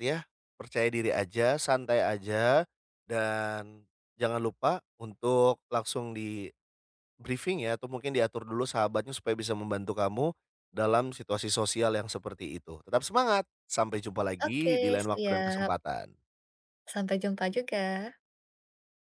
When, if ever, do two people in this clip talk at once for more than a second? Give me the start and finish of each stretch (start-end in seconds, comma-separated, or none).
14.5-15.7